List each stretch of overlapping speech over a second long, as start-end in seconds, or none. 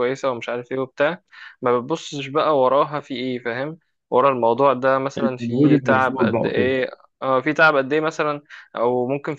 5.2-6.7